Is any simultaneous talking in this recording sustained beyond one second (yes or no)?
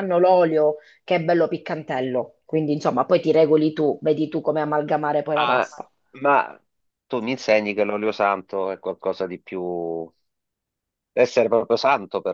no